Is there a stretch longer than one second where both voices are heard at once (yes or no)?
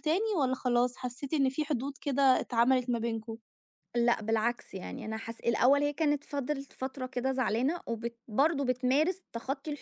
no